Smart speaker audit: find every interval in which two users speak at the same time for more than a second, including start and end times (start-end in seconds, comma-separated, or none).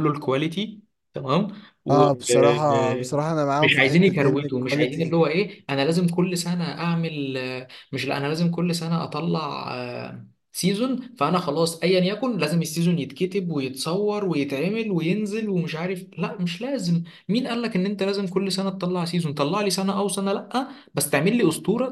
3.6-5.2